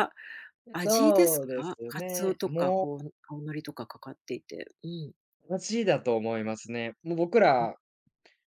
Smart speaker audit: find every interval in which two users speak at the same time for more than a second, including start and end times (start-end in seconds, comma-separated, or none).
0.8-2.9